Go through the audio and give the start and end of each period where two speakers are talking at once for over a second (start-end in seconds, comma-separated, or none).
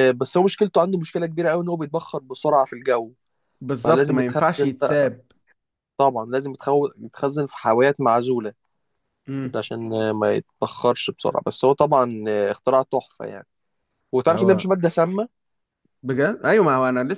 3.8-5.1